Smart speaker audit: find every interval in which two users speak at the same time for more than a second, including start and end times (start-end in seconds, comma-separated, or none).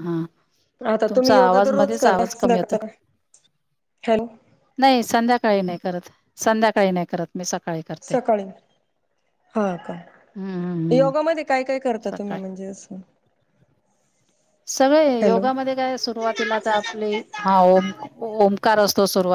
1.1-2.8